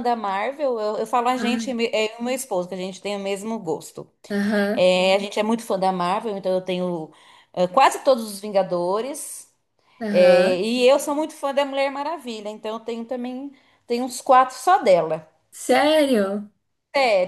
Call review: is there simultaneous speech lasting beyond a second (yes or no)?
no